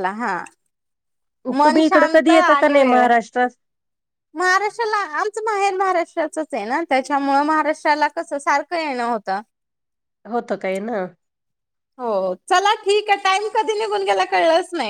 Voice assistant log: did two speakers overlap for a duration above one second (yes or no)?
yes